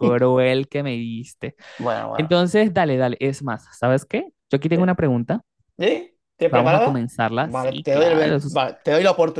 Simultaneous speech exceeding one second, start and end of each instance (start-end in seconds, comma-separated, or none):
6.4-8.6